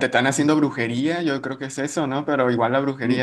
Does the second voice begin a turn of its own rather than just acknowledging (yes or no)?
yes